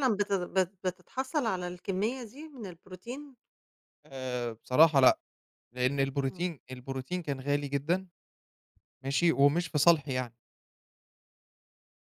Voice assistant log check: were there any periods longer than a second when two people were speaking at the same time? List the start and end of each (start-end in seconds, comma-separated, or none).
none